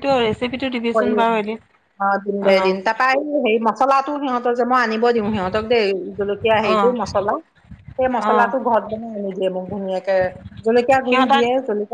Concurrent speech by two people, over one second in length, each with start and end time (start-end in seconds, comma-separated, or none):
none